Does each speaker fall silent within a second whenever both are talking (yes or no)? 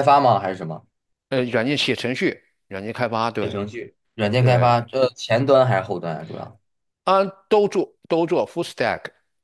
yes